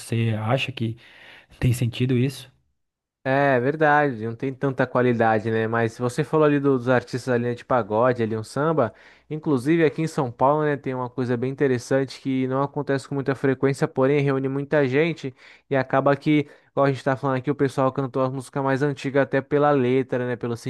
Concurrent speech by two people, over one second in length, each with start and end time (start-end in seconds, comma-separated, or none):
none